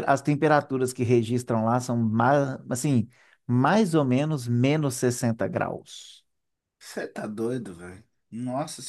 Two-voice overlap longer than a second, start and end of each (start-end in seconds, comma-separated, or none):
none